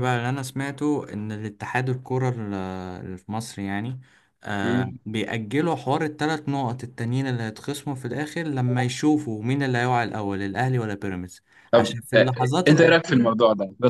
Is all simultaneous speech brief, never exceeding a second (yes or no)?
no